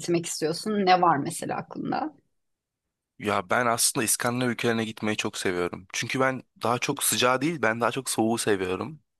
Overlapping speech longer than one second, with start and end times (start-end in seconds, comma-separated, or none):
none